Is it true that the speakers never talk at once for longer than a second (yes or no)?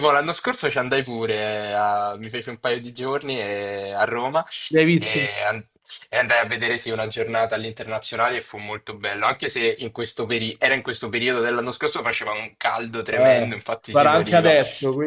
no